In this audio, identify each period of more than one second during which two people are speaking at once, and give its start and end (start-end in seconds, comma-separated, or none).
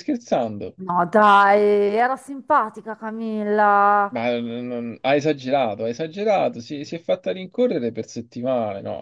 none